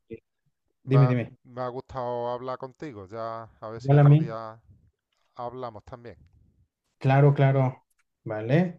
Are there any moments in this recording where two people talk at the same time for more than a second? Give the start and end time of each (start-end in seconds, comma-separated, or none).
none